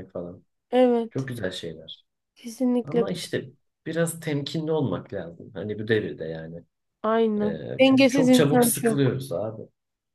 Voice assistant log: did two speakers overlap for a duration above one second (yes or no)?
yes